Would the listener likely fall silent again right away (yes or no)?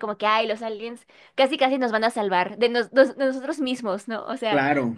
yes